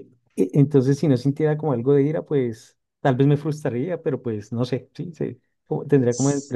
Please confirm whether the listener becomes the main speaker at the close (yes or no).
no